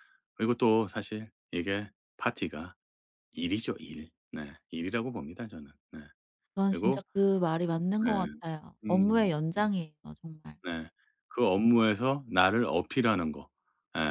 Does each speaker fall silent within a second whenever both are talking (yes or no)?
yes